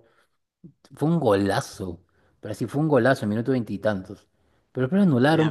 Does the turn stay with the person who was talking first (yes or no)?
yes